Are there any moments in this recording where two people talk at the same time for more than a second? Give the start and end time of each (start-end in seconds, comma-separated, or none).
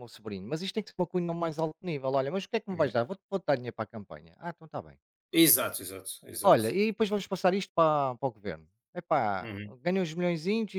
none